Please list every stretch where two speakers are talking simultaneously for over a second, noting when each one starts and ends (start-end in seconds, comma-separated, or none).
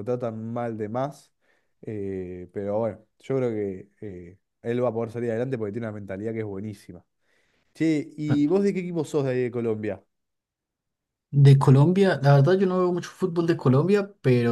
none